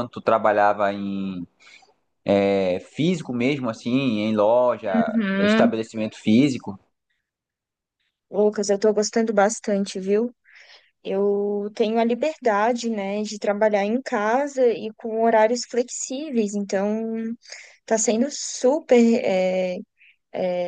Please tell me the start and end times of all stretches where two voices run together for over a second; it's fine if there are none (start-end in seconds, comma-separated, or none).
none